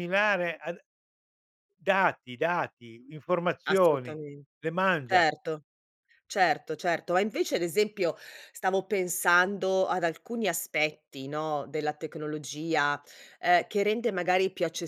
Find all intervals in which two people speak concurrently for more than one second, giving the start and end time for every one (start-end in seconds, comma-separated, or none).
none